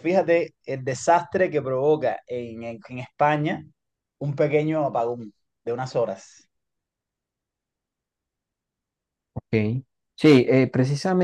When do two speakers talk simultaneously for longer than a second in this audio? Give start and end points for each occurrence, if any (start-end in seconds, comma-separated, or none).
none